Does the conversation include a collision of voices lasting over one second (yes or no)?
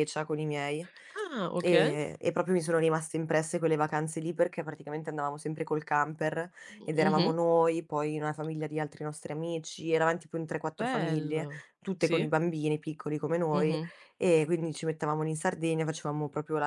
yes